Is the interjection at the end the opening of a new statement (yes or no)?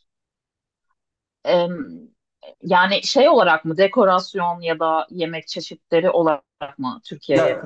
yes